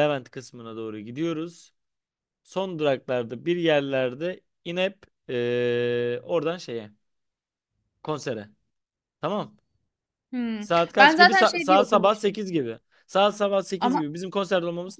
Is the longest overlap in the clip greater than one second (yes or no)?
yes